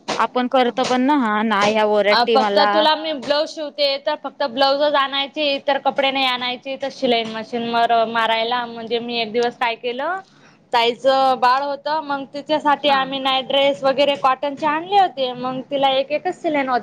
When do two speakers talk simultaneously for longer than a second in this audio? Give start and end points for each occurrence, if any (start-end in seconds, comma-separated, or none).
none